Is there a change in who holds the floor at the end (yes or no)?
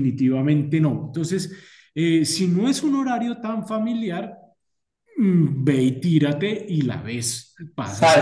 yes